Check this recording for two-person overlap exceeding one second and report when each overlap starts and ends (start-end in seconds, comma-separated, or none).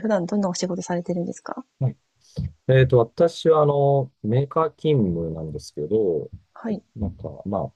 none